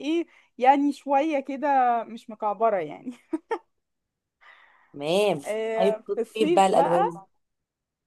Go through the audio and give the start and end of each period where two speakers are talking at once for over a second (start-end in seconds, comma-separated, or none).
5.8-7.2